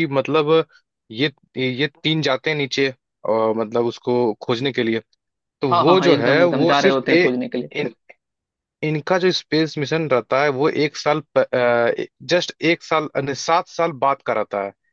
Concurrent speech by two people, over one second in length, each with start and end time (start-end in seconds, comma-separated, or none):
5.7-7.3